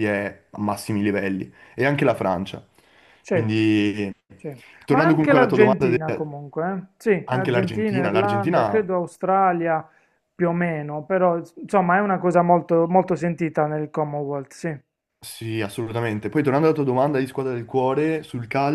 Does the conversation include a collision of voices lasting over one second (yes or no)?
yes